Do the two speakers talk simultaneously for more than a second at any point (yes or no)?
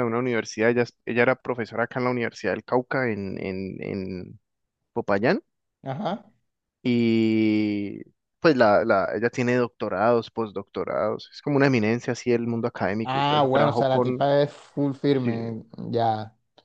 yes